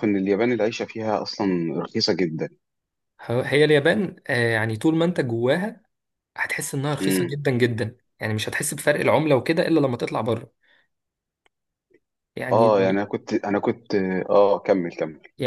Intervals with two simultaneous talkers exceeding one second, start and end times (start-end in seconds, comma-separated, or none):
none